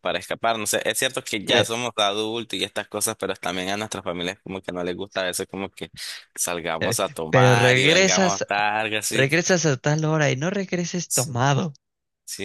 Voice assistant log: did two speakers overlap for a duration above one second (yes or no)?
yes